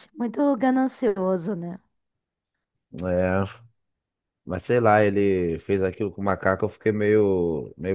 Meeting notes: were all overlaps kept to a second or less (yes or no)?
yes